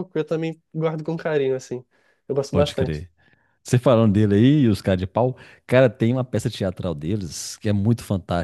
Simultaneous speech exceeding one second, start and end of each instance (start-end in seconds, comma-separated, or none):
none